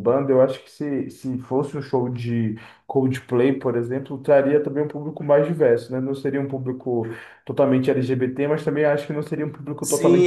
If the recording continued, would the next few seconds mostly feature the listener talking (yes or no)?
yes